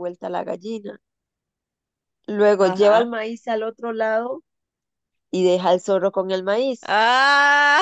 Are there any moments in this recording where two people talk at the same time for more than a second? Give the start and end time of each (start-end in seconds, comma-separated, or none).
none